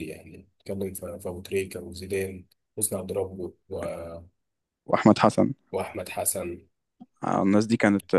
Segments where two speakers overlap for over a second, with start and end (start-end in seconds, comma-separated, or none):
none